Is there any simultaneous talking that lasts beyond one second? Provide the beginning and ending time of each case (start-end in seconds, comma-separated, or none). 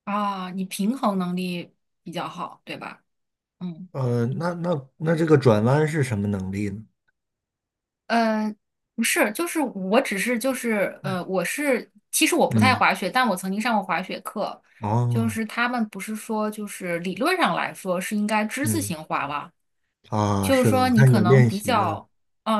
20.4-22.0